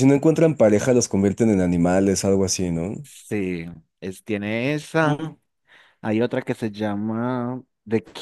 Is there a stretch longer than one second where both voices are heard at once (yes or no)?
no